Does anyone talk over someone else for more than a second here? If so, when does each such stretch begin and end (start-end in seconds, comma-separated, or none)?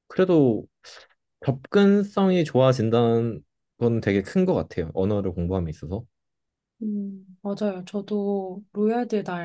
none